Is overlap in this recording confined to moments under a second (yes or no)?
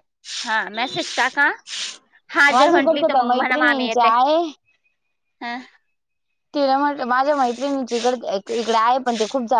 no